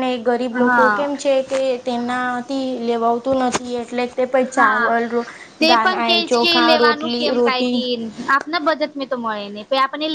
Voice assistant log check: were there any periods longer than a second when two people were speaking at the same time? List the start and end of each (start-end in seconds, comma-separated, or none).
5.7-7.8